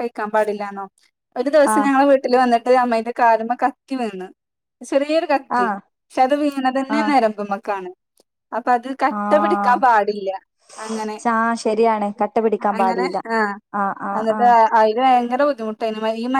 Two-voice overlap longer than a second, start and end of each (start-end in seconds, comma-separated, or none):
none